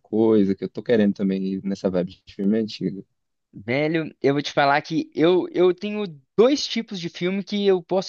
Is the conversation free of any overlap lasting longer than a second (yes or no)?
yes